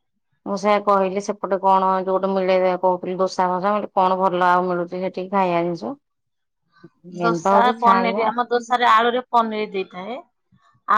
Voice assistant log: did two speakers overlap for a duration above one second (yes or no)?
yes